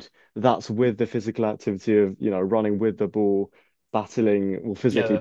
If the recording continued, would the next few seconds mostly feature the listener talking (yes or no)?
no